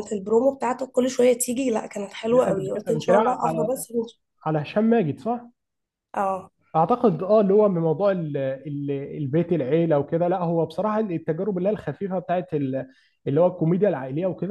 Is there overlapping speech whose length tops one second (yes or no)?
yes